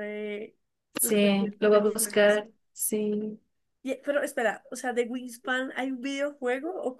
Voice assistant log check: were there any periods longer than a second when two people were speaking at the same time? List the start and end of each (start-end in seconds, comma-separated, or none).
1.0-2.4